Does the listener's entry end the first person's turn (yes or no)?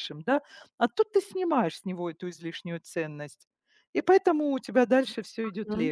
yes